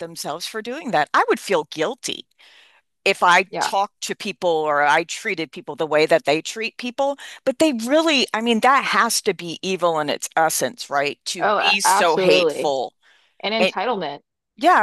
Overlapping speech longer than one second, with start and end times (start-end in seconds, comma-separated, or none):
11.4-12.7